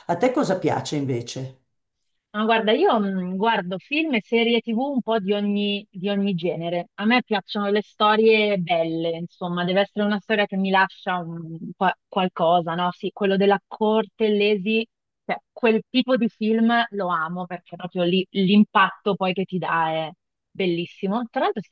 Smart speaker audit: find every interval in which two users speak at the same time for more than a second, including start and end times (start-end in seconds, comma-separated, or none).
none